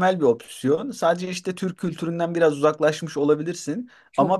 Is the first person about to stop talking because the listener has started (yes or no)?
no